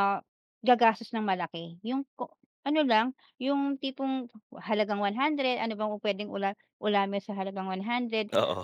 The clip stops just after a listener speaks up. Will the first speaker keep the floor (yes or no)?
yes